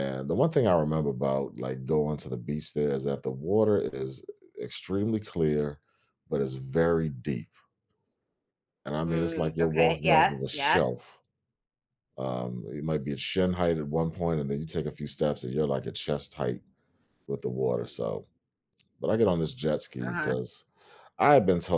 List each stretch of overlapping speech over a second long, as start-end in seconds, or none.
9.0-10.8